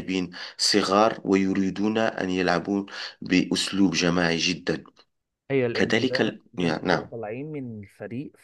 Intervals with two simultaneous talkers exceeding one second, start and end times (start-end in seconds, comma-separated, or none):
5.7-7.1